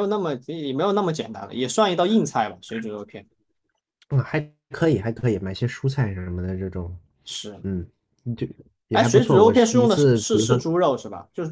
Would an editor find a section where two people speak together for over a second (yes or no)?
yes